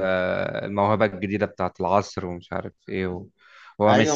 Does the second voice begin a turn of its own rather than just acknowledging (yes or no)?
yes